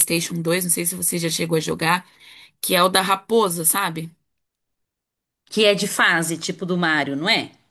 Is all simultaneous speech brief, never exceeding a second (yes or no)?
yes